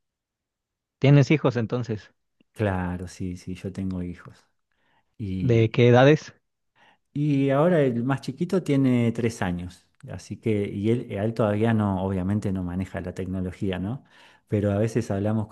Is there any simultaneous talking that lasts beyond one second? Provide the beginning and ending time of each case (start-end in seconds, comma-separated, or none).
none